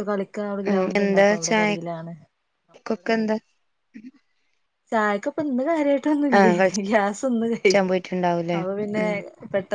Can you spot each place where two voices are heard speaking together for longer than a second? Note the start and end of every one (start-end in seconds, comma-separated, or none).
none